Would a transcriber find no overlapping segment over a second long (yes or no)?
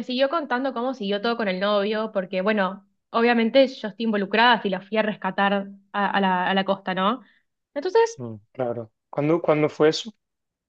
yes